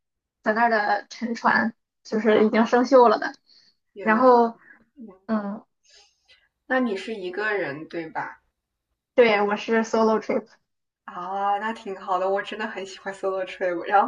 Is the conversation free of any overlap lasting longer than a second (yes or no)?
yes